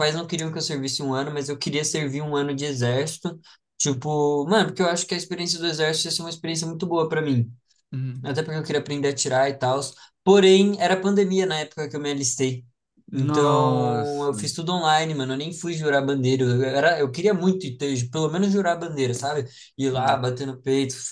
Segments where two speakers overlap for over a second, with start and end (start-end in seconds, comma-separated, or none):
13.1-14.4